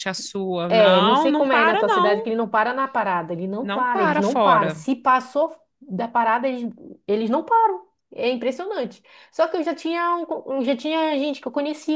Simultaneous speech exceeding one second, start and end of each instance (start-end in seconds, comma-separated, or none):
0.7-2.3, 3.6-4.8